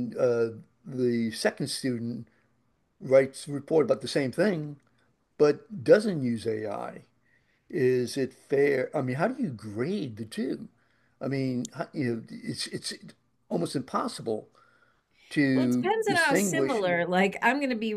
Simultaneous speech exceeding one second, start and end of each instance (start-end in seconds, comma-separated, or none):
15.5-16.8